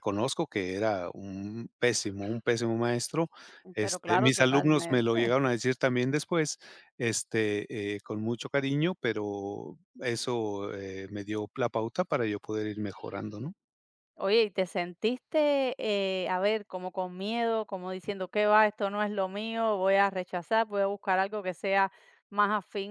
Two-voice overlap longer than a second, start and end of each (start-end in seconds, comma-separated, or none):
3.8-5.1